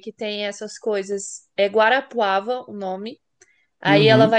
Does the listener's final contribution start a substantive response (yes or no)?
no